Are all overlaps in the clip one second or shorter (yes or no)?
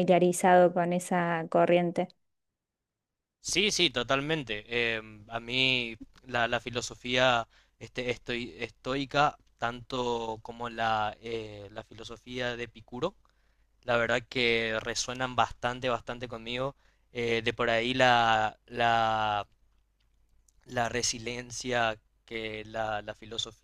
yes